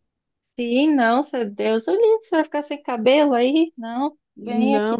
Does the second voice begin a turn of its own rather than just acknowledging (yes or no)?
yes